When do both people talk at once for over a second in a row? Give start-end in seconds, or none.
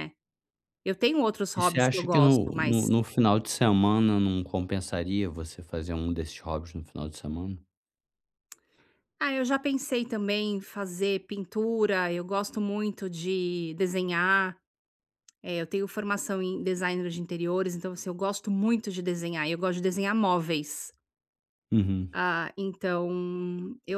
1.6-2.9